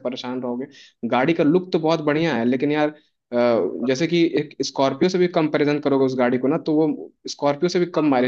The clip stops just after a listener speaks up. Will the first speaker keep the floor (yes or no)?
yes